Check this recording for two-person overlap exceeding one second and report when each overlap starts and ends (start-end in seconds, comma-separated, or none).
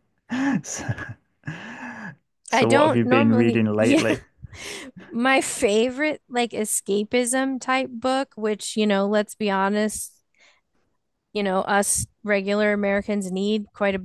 2.5-4.0